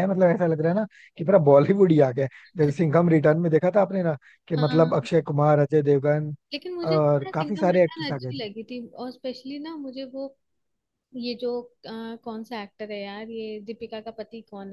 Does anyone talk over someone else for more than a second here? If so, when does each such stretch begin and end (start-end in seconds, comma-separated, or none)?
6.9-8.4